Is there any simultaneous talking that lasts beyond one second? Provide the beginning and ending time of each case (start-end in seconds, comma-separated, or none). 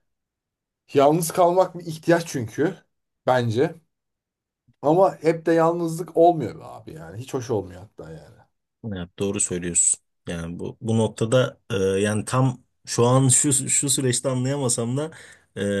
none